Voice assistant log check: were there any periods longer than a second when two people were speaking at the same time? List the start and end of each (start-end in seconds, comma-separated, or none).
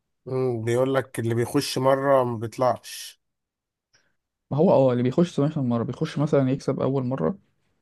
none